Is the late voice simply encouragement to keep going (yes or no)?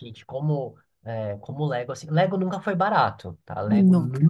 yes